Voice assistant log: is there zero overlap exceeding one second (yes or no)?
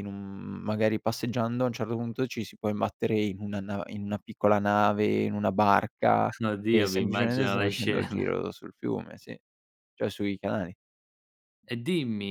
no